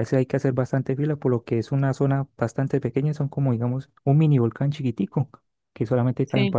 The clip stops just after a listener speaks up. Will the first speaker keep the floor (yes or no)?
yes